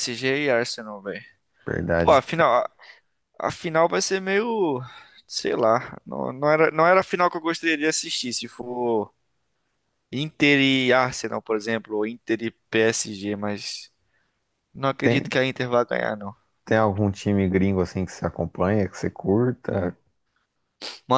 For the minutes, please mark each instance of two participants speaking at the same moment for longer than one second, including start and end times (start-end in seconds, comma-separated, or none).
none